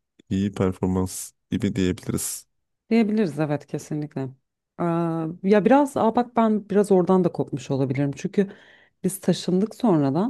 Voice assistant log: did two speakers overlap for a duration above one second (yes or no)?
no